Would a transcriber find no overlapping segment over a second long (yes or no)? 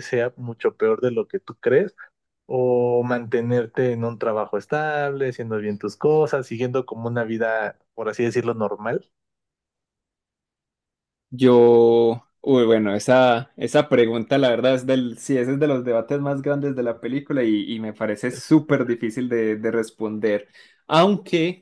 yes